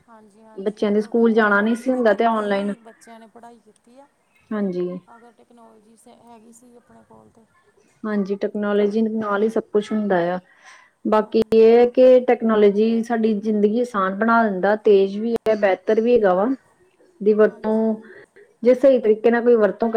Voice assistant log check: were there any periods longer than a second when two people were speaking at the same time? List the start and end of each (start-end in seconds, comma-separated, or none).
0.6-2.7